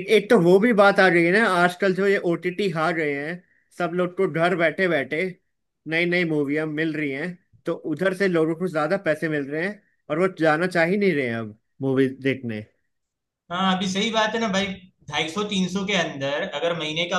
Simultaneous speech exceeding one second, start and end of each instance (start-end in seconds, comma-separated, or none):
none